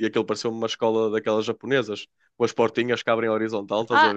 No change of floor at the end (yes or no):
no